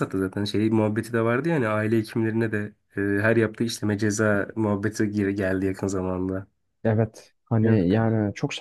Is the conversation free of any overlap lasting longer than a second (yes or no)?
yes